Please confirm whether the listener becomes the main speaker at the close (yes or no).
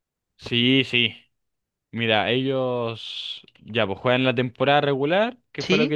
no